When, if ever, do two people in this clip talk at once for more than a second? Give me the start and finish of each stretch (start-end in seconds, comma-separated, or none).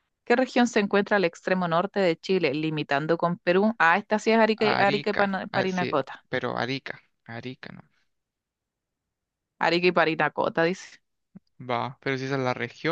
4.6-6.2